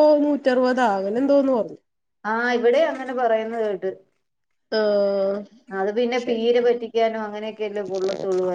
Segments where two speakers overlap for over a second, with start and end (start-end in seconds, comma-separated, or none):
none